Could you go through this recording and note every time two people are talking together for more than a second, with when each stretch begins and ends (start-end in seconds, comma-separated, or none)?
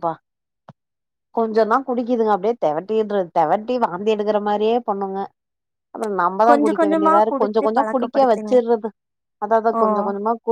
6.5-8.5